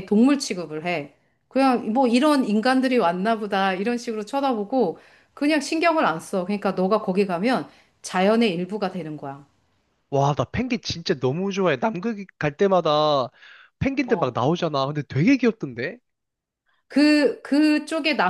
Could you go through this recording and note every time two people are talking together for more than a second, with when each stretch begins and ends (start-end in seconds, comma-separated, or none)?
none